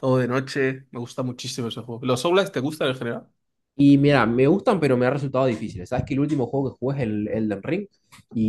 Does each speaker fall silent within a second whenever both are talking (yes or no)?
yes